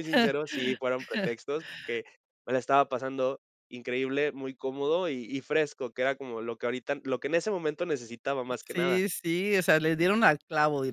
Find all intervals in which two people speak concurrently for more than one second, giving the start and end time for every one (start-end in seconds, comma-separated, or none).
none